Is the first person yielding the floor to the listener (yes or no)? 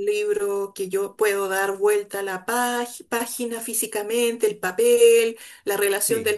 no